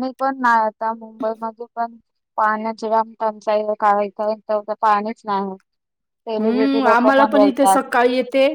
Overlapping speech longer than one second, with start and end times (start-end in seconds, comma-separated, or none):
6.4-7.8